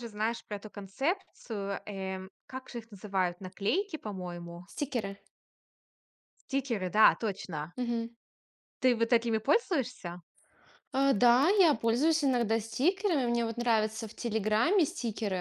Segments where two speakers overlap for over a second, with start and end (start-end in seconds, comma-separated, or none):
none